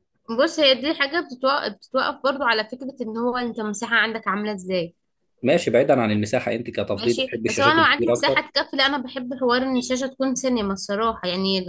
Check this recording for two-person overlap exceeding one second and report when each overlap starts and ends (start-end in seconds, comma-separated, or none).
6.9-8.4